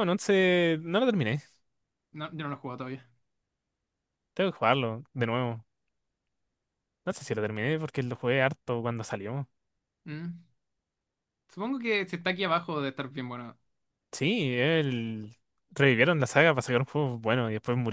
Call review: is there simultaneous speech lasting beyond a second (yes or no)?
no